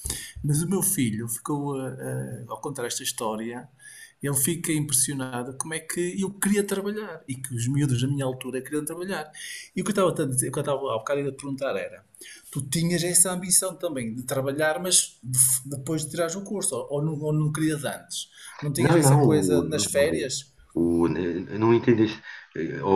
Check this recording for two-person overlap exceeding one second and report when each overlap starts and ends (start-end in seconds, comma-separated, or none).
18.8-20.3